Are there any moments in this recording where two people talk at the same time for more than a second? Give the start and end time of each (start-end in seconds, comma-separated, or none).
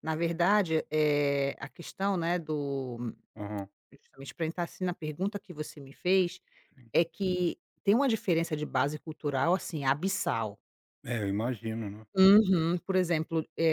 none